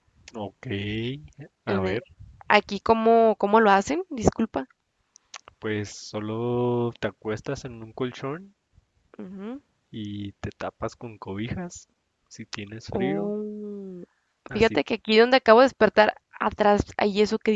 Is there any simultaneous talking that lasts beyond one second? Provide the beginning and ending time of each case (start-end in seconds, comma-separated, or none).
none